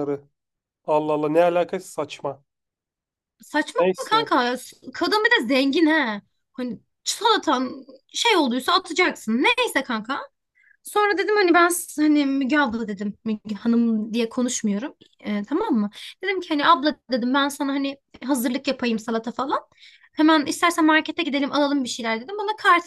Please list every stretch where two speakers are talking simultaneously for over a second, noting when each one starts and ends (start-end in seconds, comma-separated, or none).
none